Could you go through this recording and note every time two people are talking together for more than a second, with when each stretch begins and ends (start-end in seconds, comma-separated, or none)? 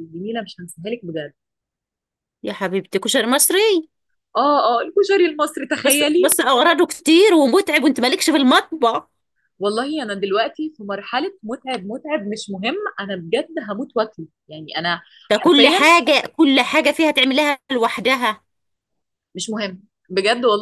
none